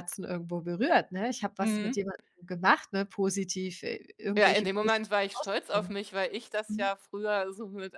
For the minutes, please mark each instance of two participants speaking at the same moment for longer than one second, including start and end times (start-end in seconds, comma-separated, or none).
4.4-5.9